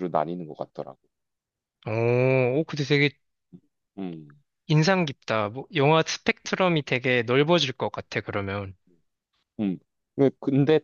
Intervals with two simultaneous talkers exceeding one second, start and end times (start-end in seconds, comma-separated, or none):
none